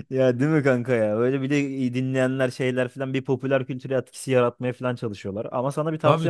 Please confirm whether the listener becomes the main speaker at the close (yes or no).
no